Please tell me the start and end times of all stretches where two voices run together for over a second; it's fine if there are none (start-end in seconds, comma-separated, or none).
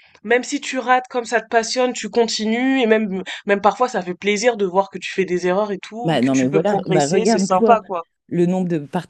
6.0-7.8